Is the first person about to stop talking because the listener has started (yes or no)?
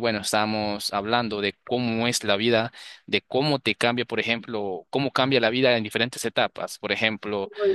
no